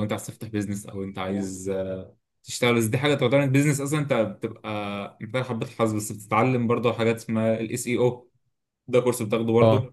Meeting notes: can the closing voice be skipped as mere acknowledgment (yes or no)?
yes